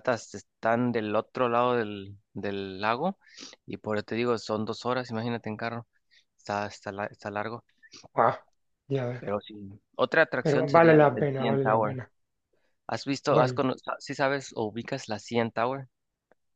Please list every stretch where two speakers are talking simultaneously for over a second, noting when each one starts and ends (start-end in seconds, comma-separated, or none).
10.4-11.9